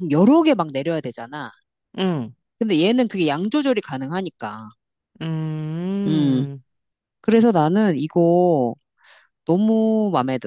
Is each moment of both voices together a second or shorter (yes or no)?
yes